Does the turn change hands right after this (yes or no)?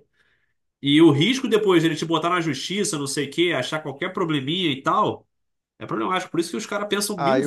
yes